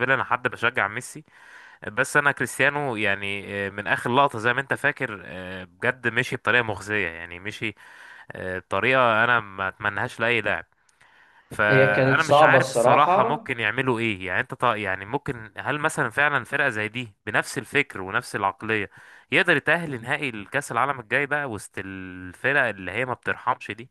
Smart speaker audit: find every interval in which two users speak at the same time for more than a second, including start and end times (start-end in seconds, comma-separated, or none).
11.7-13.4